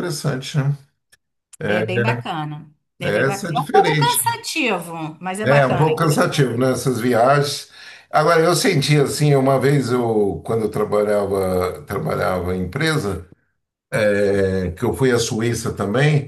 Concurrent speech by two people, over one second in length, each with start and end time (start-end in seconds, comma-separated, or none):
3.0-4.4, 5.4-6.7